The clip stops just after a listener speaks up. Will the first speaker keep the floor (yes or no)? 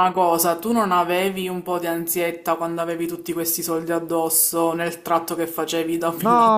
no